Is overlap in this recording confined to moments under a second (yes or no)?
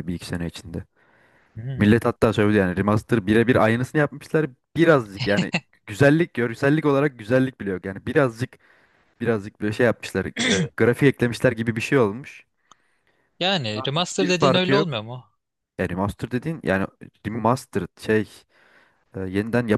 no